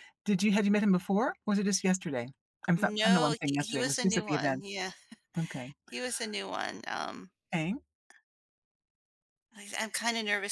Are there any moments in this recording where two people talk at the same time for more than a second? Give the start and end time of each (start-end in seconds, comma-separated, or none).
2.8-4.6